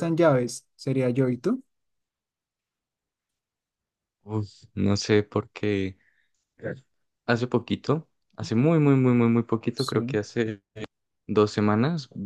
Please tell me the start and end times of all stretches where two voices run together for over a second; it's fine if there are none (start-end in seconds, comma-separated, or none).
none